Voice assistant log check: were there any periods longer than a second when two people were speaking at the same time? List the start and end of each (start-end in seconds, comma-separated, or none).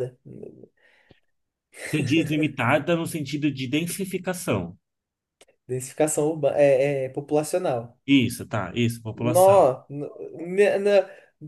none